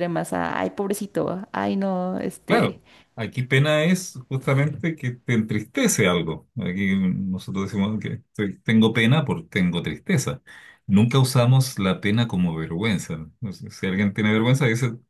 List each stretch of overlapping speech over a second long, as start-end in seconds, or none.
none